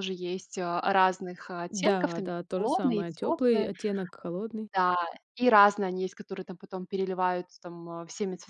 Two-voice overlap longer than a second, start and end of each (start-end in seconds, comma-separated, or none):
1.7-3.7